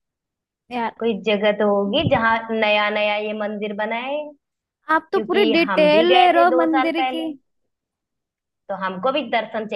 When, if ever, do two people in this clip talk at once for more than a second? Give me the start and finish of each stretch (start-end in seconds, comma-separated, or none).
4.9-7.3